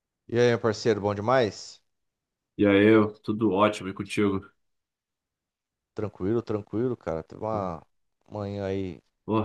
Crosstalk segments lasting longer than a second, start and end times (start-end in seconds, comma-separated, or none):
none